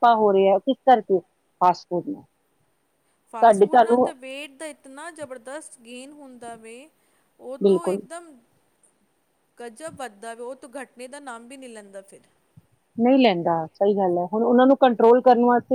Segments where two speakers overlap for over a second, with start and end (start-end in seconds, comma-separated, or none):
none